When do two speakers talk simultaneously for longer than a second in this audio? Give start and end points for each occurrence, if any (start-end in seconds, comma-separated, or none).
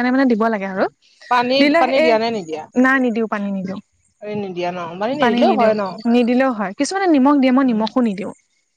none